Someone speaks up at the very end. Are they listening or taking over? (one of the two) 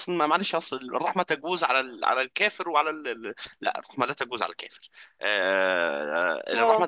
listening